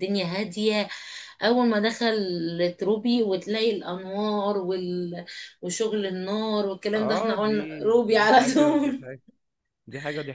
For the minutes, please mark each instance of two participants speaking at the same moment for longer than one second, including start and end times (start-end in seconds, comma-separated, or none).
6.9-9.0